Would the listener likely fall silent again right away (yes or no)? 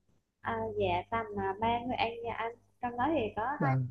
yes